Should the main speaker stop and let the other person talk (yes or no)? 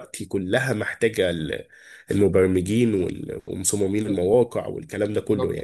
yes